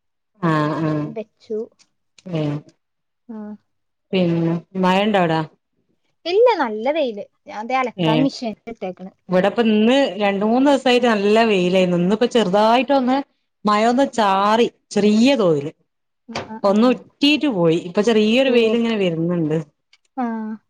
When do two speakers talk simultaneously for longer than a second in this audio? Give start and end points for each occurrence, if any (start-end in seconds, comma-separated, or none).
none